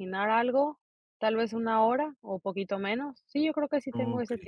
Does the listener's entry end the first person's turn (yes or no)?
yes